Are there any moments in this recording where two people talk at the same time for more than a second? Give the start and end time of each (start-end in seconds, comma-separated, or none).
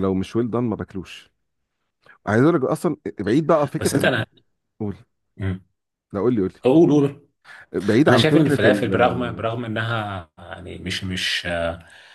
8.1-9.6